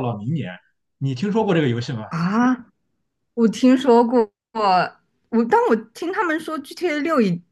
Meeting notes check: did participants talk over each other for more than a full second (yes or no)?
no